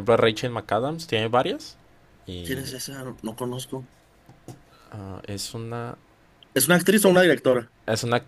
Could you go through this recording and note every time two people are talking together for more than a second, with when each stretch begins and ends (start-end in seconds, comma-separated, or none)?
none